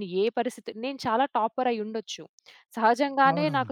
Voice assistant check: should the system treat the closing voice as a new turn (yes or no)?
no